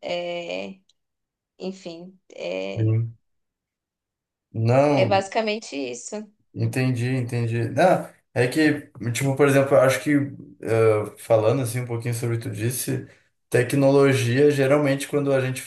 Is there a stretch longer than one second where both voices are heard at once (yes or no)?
no